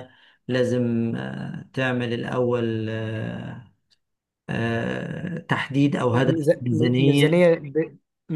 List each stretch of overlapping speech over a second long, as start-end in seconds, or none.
6.1-7.5